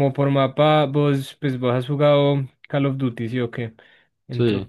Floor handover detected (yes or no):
no